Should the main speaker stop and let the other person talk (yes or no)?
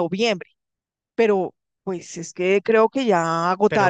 yes